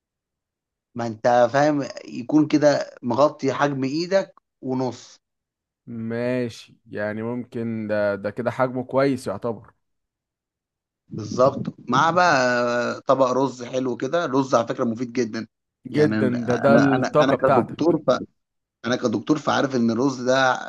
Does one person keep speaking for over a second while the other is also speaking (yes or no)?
yes